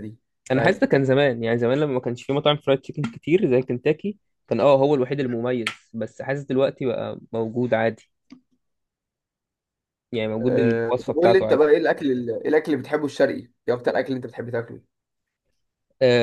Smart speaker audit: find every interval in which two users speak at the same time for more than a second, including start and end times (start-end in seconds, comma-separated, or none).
10.4-11.6